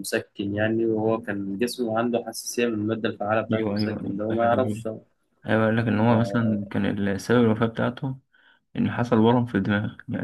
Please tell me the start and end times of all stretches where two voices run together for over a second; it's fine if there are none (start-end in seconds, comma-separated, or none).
3.5-4.8